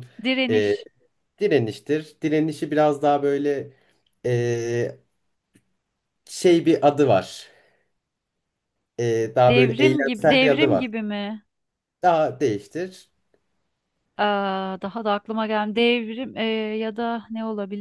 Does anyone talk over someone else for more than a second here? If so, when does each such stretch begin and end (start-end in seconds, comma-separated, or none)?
9.5-10.8